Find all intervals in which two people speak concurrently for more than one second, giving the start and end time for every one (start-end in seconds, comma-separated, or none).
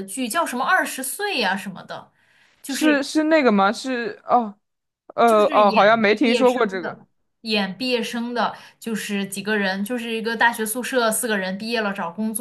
5.3-7.0